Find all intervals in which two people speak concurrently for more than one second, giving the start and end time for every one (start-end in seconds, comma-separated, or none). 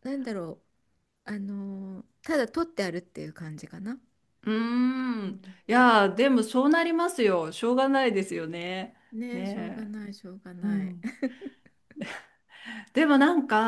none